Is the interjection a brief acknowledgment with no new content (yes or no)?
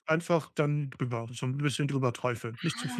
no